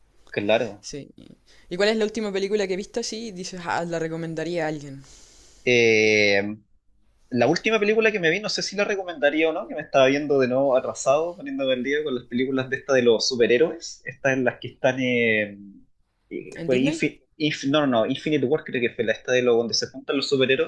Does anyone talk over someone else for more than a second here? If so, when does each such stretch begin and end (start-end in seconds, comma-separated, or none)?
none